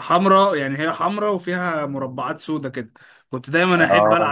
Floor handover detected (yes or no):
no